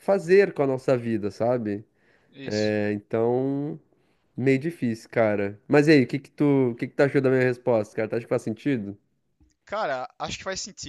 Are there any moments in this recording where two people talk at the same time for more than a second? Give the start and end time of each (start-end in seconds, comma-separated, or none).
none